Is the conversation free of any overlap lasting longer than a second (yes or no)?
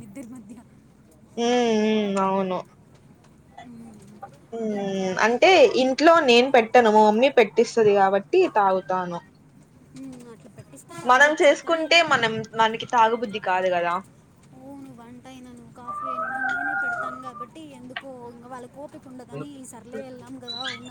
yes